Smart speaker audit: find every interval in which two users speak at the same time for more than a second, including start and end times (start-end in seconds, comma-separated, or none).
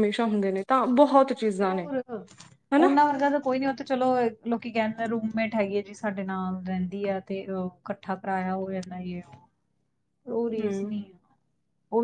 none